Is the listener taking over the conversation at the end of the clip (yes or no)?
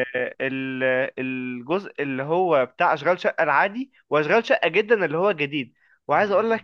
no